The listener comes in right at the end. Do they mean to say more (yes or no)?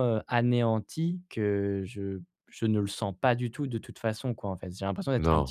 no